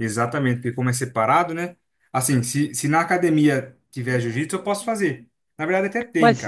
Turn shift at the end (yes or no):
yes